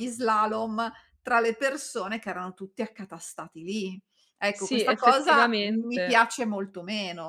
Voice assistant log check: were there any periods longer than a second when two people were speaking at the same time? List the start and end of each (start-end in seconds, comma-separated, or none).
4.5-6.2